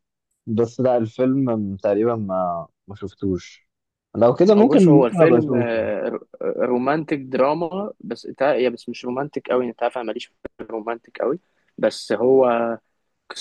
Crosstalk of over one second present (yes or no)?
yes